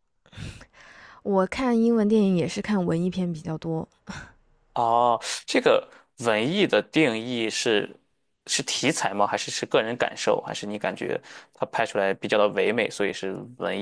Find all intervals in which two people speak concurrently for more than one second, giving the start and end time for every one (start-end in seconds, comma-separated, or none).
none